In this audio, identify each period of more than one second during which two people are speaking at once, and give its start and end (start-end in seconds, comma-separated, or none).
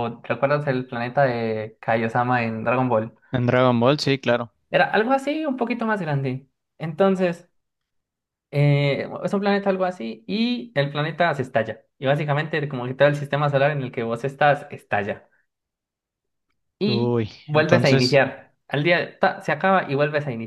16.9-18.2